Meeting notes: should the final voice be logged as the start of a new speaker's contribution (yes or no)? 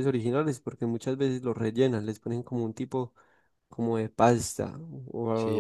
yes